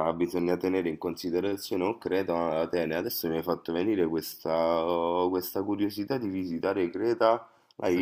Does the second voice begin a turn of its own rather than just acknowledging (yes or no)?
no